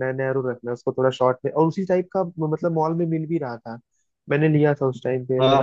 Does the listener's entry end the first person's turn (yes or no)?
yes